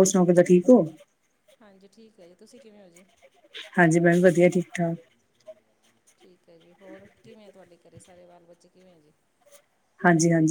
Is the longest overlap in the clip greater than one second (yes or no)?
no